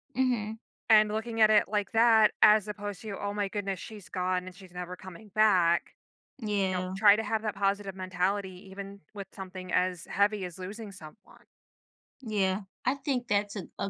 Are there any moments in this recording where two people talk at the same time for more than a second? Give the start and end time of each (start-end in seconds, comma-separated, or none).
none